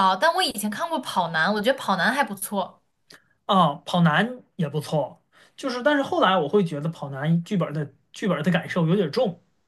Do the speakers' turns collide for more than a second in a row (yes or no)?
no